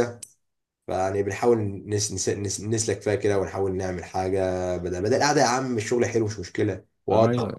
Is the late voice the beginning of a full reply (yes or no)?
yes